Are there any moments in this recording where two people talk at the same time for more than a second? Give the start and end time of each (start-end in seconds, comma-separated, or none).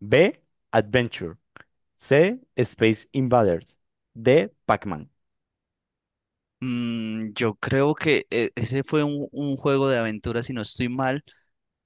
none